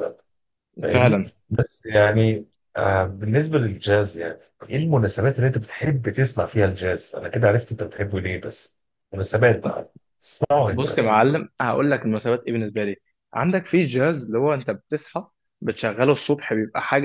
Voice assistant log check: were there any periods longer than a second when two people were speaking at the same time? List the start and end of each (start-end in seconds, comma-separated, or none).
none